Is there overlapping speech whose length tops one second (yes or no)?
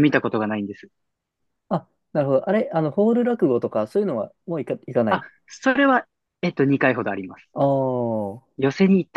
no